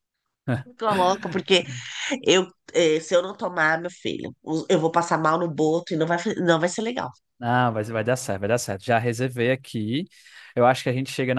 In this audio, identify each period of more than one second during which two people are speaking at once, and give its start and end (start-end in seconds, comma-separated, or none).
none